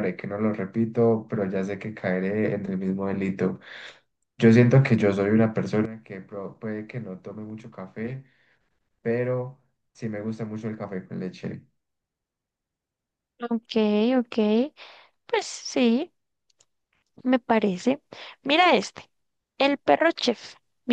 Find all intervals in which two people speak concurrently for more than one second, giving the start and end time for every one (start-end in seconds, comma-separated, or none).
none